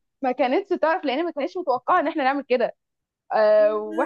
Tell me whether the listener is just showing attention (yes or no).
yes